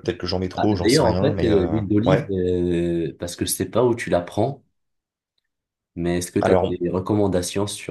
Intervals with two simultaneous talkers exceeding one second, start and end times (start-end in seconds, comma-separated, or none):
0.6-2.3